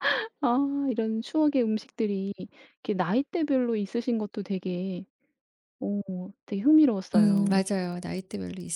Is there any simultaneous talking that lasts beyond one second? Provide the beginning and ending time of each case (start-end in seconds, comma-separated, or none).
none